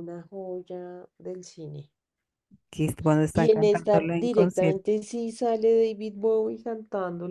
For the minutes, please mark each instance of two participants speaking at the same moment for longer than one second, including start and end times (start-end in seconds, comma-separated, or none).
3.3-4.9